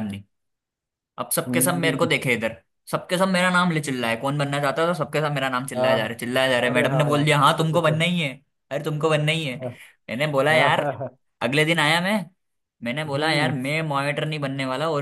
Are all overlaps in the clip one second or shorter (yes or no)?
no